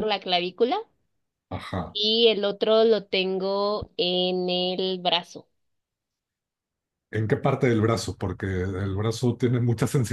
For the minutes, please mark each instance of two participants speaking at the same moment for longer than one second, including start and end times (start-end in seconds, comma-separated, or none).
none